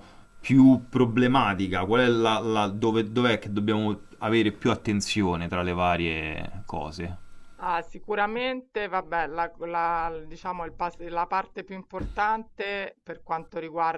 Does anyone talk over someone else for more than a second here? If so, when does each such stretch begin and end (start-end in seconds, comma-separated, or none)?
none